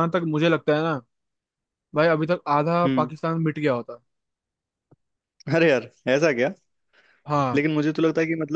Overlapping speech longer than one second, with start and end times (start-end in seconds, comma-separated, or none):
none